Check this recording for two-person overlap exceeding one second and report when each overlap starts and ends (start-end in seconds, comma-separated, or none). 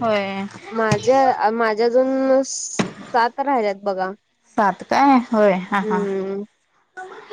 none